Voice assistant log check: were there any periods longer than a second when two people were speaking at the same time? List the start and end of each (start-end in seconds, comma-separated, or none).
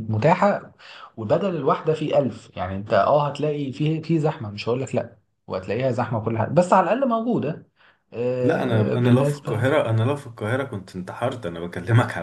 8.4-9.6